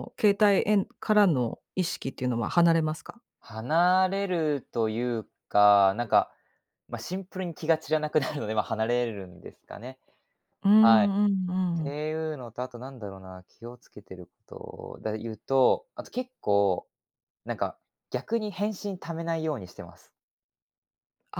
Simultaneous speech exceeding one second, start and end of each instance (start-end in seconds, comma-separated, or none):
none